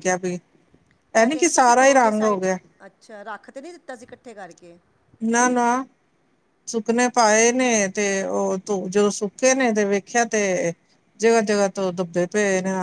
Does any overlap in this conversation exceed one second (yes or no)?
yes